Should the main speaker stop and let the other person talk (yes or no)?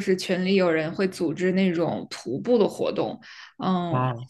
no